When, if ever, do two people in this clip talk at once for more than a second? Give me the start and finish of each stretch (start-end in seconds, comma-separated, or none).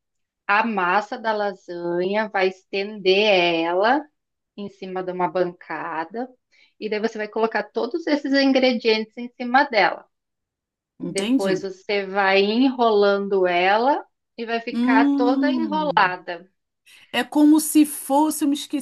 14.7-16.1